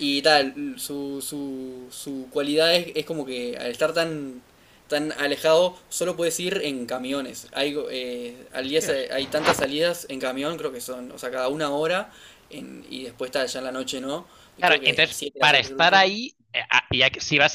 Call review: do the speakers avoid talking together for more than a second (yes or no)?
no